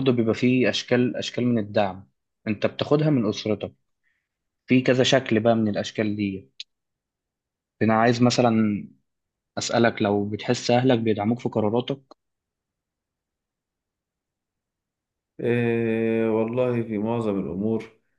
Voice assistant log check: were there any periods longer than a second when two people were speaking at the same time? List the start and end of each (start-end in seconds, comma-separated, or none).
none